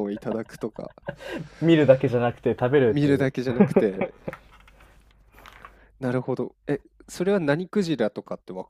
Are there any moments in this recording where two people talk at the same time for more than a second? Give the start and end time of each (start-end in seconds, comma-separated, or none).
none